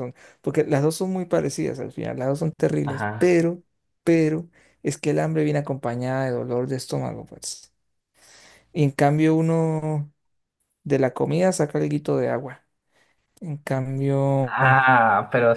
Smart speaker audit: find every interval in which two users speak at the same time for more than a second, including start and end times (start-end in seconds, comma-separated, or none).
none